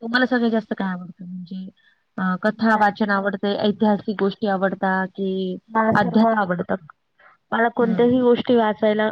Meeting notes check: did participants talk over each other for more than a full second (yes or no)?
no